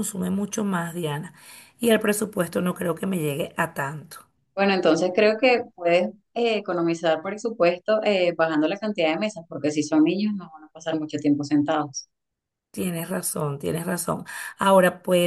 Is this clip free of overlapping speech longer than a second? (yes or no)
yes